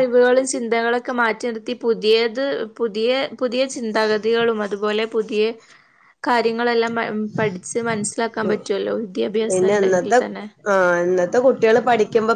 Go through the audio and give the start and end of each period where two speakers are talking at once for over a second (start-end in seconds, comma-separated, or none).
none